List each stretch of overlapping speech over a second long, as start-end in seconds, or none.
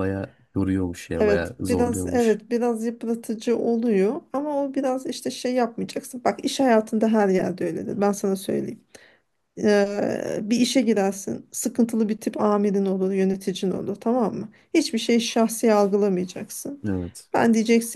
1.2-2.4